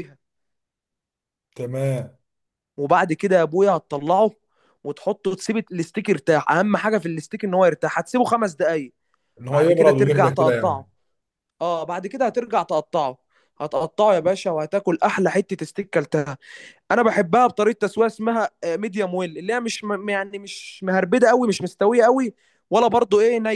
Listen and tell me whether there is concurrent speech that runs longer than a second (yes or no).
yes